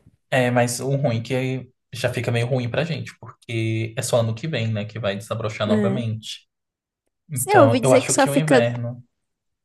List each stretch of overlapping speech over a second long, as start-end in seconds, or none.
7.3-8.7